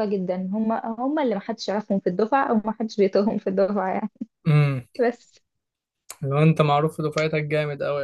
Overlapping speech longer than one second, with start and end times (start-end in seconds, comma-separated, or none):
none